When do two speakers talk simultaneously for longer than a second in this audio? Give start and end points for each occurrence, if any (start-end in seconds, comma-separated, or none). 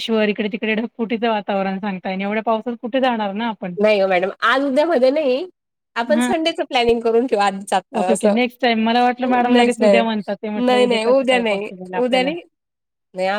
9.5-12.3